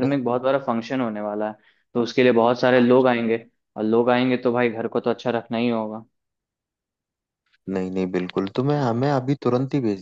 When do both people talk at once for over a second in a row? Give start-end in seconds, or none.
none